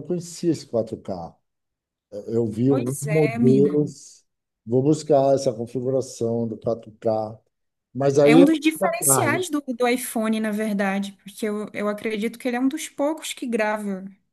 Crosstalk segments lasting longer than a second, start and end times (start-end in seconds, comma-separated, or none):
2.7-3.9, 8.2-9.4